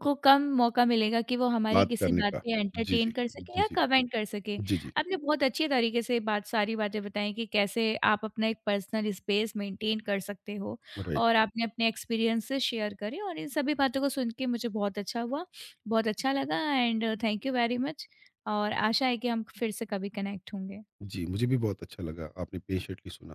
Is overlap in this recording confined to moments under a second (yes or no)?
no